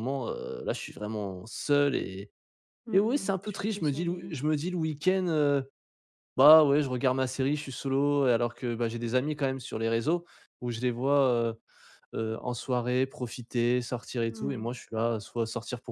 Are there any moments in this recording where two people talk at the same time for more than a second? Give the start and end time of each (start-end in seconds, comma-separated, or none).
2.9-4.3